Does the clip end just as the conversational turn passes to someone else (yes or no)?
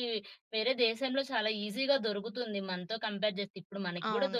no